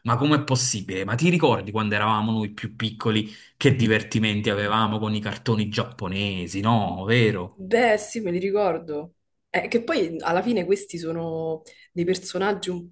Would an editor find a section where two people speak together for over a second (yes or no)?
no